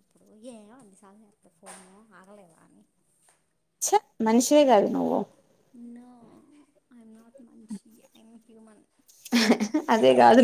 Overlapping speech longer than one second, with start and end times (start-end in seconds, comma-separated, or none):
none